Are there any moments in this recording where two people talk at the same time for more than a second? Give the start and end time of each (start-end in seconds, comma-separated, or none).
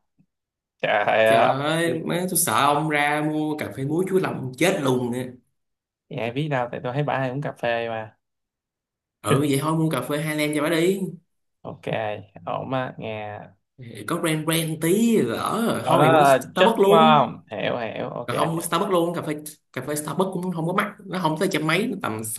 15.8-17.3